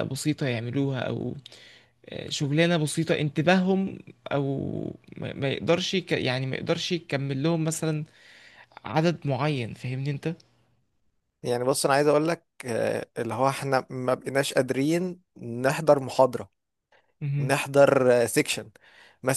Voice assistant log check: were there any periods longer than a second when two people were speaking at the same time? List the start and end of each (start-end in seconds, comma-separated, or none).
none